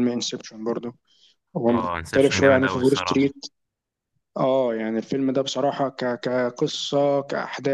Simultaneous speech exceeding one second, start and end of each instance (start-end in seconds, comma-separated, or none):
1.7-3.3